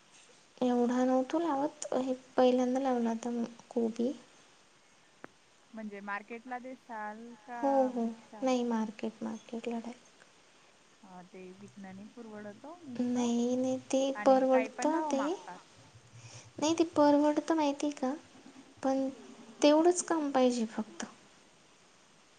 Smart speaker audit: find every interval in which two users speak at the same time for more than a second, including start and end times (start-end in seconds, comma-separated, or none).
13.0-15.2